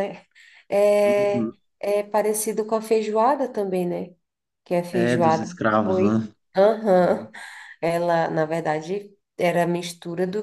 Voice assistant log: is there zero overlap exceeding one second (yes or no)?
no